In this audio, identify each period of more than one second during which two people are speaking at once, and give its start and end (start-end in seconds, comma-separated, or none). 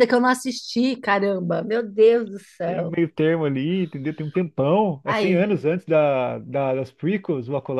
none